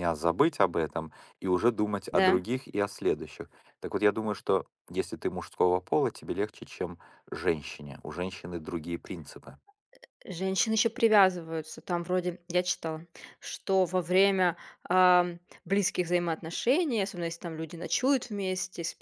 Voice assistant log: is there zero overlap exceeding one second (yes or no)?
yes